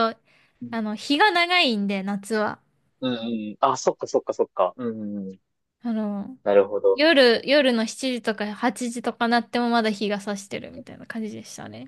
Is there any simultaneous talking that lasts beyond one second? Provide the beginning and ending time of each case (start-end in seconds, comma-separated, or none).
none